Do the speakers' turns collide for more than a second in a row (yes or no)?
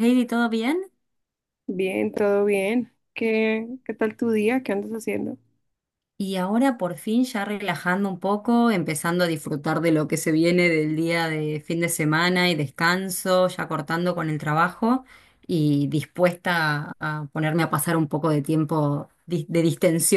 no